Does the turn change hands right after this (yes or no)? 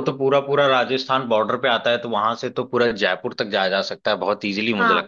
yes